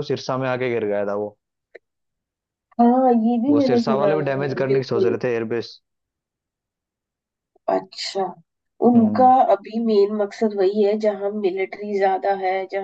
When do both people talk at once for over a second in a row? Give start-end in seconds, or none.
3.5-5.2